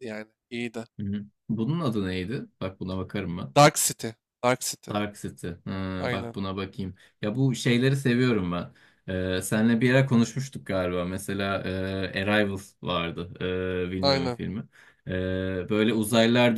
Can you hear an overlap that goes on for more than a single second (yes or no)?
no